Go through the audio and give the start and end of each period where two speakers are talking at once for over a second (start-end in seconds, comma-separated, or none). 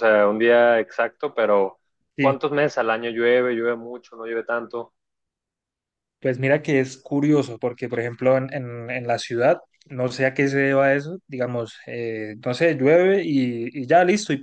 none